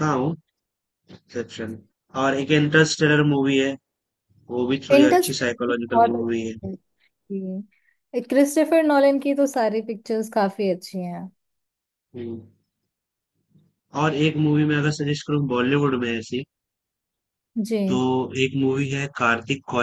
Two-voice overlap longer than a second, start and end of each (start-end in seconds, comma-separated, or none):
4.9-6.5